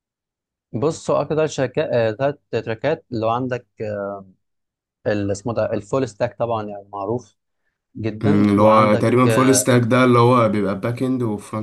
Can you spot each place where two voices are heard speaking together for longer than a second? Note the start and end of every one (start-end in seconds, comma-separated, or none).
8.2-9.7